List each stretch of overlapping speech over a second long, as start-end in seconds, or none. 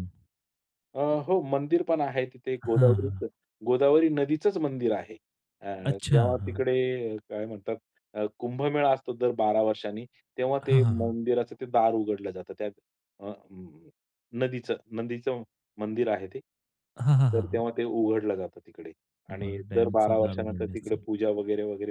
19.4-21.0